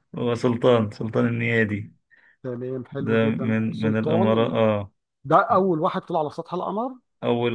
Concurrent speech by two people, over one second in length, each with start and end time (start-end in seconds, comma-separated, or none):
3.0-4.5